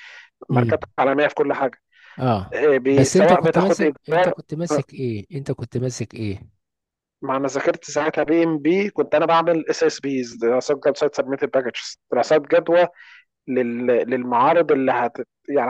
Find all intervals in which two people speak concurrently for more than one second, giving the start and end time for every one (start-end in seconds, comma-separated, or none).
2.5-4.3